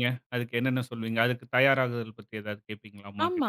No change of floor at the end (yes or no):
no